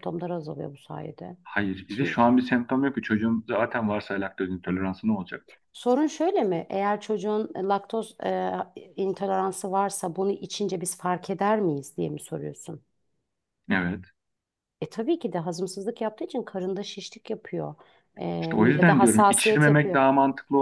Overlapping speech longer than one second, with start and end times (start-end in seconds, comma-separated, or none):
18.4-20.0